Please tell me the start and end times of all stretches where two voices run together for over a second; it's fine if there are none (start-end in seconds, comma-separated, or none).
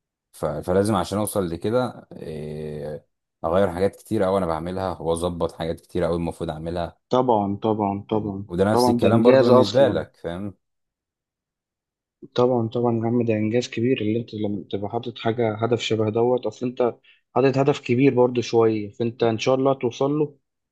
8.1-10.0